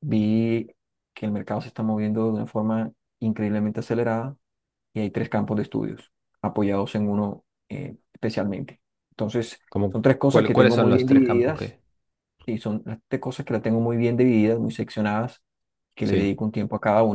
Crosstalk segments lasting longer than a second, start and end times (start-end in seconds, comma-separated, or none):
9.7-11.8